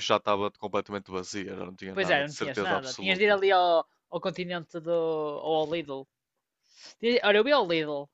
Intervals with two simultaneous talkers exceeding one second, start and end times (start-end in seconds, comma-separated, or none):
1.9-3.4